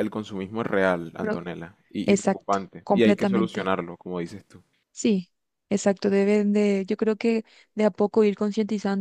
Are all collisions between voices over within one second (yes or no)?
no